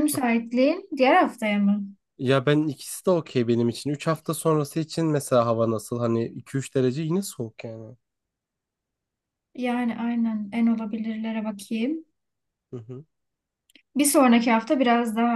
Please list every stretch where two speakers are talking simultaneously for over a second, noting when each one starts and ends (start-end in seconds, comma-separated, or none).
none